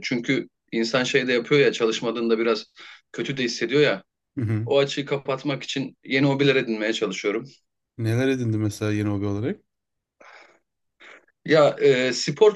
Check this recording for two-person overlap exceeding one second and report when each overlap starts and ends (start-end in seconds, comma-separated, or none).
none